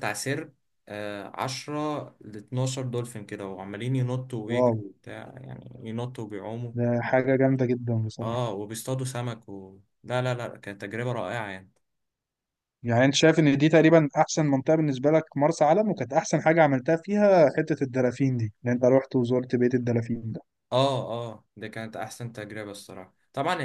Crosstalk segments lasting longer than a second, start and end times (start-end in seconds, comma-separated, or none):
none